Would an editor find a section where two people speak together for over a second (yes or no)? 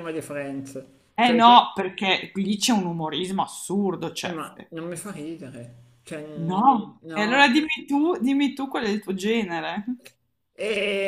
yes